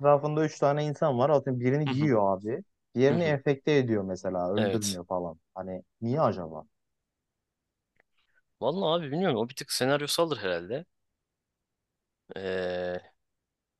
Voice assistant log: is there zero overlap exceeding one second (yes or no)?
yes